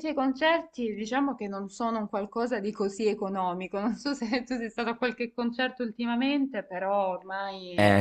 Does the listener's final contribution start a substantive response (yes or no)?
yes